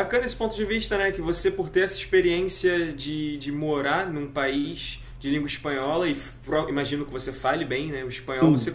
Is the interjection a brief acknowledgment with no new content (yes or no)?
yes